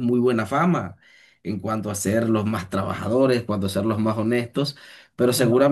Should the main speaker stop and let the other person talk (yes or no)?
no